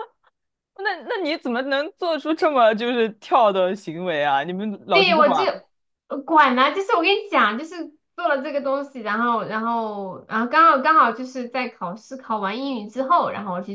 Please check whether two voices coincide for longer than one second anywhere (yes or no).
no